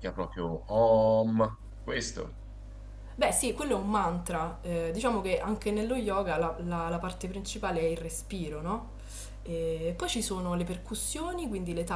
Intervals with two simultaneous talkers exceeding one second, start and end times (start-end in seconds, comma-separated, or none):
none